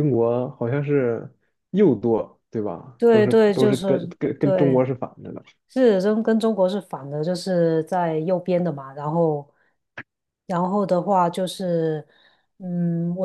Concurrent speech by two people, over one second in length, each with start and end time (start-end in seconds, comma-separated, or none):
3.0-4.8